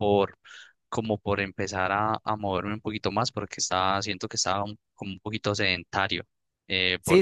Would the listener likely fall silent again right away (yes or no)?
yes